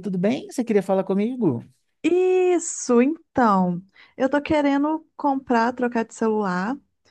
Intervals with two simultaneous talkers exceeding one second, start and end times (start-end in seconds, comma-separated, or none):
none